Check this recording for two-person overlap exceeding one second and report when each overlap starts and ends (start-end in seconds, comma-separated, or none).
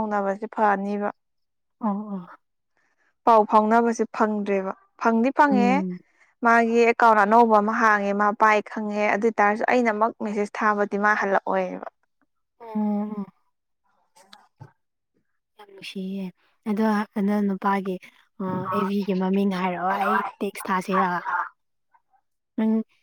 none